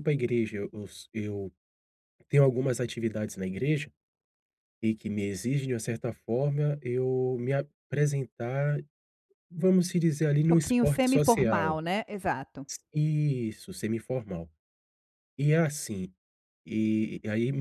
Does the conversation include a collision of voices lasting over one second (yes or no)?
yes